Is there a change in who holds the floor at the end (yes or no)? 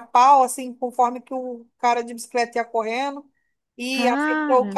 no